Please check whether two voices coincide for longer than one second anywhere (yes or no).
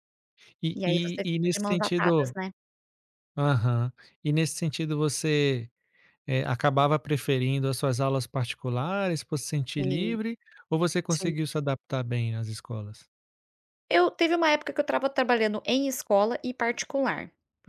yes